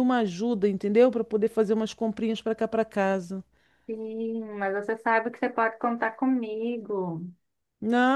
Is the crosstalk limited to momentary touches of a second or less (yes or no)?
yes